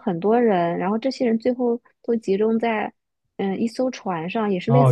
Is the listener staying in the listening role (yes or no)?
no